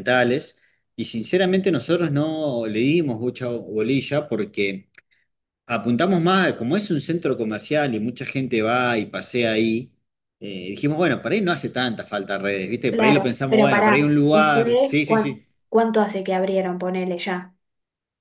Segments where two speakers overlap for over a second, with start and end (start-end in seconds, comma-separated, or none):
12.9-15.5